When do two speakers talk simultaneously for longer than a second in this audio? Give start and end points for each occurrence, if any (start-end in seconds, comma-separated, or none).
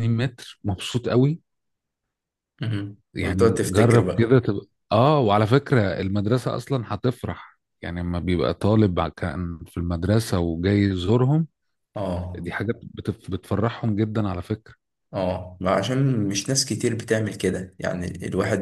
3.1-4.3